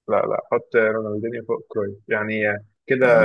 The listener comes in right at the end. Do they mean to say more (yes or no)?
yes